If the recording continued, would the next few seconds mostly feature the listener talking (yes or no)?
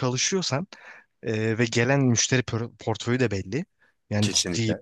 no